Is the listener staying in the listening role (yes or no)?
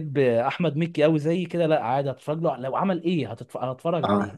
no